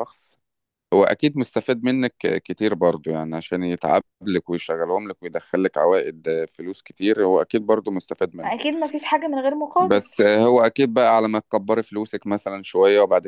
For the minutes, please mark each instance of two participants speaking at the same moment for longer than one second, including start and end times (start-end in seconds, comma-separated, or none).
none